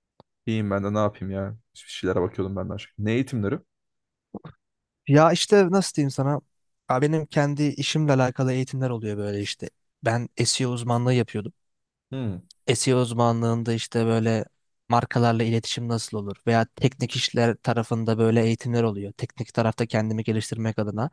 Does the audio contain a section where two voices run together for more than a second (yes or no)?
no